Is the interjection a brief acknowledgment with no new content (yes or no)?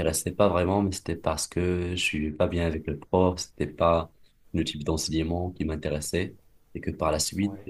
yes